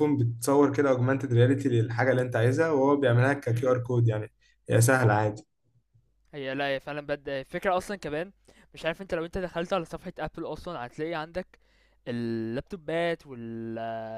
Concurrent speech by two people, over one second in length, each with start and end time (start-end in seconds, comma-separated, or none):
none